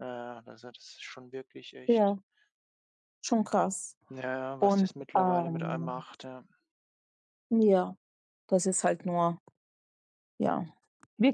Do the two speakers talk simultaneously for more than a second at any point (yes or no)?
yes